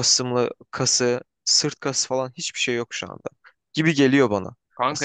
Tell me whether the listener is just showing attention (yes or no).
no